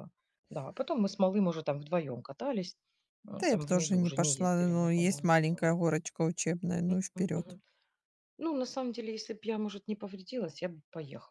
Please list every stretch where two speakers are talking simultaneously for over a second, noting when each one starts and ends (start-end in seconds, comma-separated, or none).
3.4-5.8